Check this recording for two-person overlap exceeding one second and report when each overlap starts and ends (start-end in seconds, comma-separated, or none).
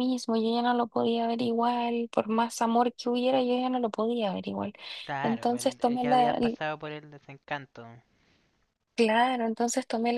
5.2-6.6